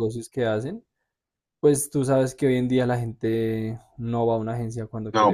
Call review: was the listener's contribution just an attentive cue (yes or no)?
no